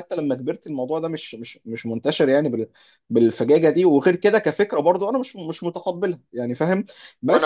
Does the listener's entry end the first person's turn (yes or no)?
no